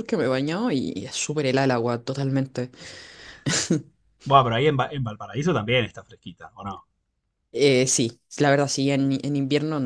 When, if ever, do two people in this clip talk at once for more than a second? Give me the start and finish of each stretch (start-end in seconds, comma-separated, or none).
none